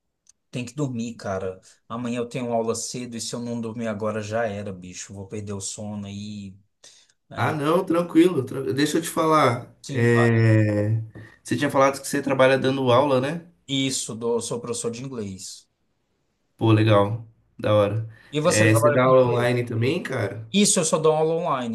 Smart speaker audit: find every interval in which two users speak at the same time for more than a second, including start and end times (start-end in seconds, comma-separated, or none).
18.3-19.5